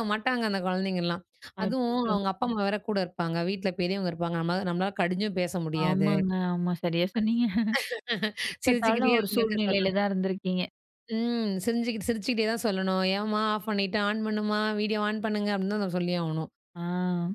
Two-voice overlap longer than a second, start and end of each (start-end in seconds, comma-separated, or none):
8.6-10.0